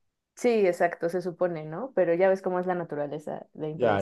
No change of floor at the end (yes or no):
no